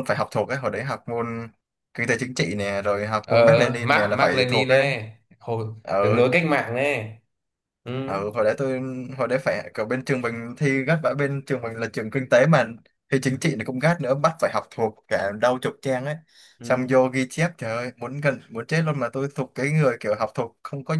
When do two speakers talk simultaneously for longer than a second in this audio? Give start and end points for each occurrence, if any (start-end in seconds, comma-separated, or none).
3.3-4.9